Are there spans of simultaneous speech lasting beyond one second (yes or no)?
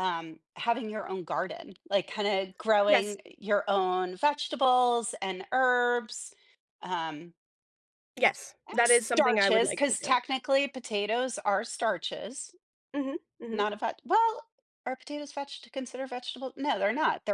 yes